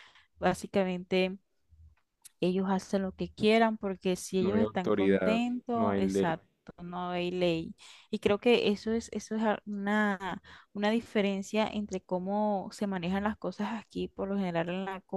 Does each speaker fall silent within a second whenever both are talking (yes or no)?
no